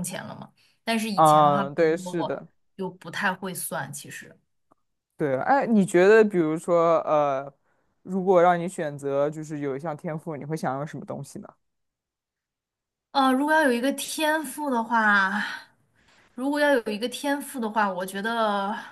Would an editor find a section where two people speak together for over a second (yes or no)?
yes